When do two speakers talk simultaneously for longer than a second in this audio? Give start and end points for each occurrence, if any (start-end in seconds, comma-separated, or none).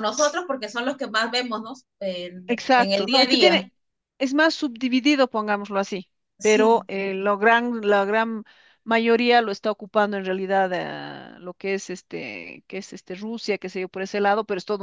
2.5-3.7